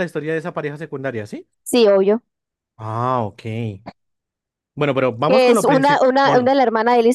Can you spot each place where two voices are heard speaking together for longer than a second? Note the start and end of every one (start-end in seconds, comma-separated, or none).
5.3-6.5